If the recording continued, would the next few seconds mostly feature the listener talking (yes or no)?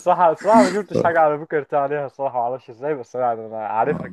yes